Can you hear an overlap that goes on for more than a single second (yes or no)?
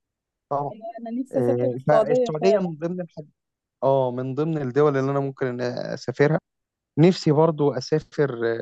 yes